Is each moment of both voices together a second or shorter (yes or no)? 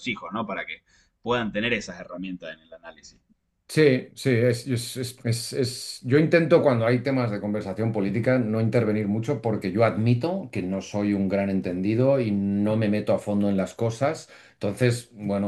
yes